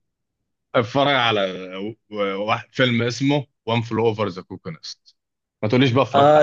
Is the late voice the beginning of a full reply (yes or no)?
yes